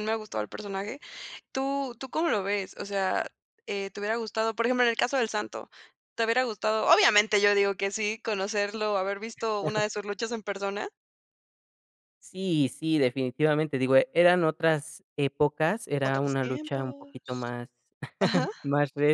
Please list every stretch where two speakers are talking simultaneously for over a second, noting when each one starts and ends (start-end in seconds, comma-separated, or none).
16.0-17.5